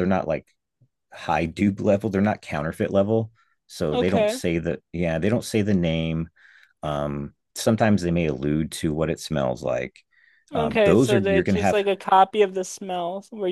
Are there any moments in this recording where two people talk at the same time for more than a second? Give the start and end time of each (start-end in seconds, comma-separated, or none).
10.5-11.8